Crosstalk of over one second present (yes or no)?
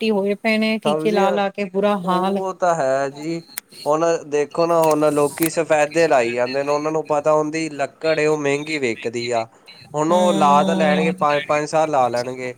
no